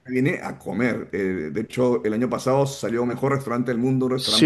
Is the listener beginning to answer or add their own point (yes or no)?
yes